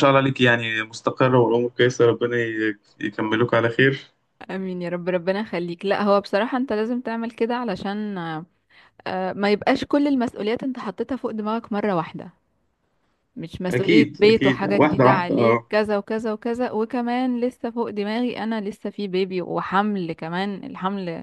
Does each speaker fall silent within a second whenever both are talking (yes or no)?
no